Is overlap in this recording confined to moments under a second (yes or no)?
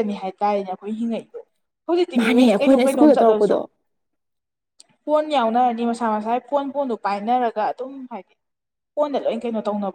no